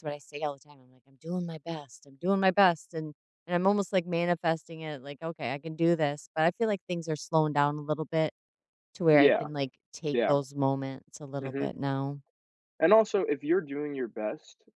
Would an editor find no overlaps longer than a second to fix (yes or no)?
yes